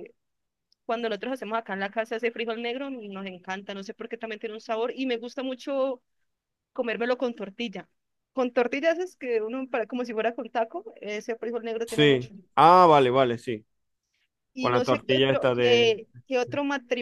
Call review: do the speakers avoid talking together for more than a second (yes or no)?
no